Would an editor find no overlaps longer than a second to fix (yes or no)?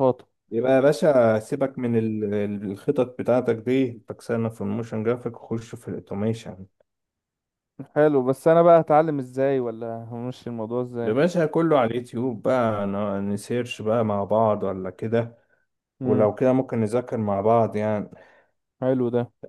yes